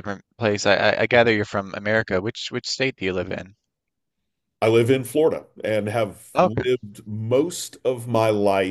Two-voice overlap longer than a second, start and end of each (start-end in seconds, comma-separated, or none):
none